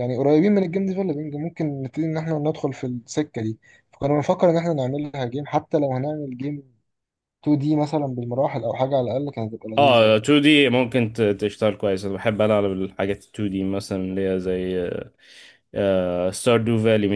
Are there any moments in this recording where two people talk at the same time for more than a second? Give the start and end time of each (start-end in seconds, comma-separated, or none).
none